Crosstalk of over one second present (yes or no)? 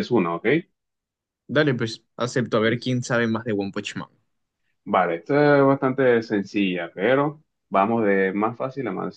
no